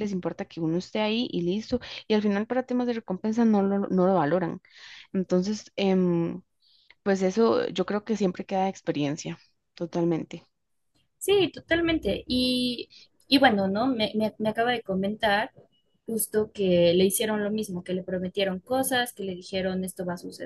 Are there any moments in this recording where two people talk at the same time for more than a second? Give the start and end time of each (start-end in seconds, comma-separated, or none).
none